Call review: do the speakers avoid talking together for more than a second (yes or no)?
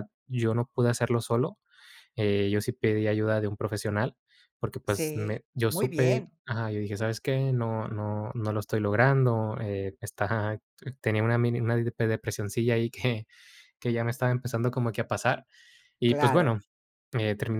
no